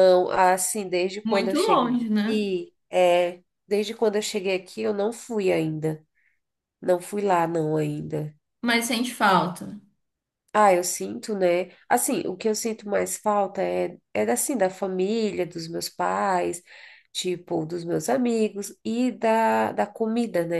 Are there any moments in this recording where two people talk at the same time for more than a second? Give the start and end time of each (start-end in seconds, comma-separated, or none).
1.2-2.5